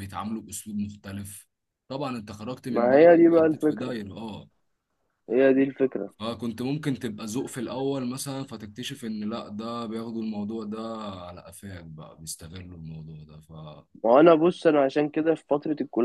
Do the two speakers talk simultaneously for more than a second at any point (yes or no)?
yes